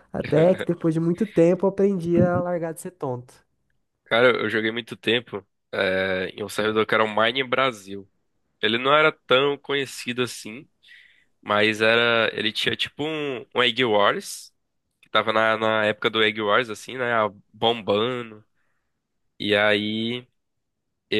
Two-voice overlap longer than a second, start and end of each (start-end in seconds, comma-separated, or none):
none